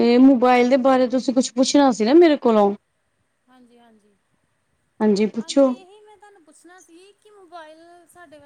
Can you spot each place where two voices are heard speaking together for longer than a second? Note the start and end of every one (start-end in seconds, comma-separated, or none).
none